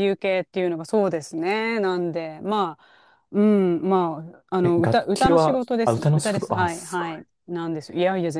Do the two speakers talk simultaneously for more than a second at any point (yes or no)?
yes